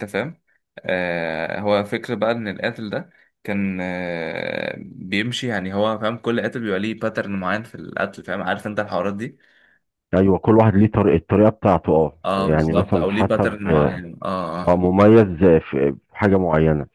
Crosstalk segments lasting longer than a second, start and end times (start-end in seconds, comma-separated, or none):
12.2-14.0